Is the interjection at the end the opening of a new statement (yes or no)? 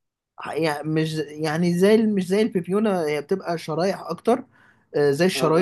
no